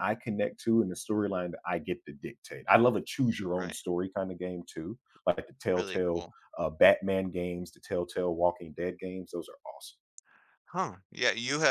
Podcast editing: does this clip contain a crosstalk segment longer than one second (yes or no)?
no